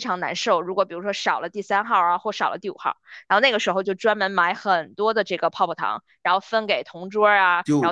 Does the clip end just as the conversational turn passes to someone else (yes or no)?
no